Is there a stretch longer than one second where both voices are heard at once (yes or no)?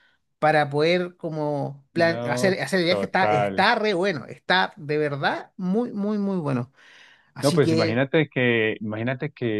yes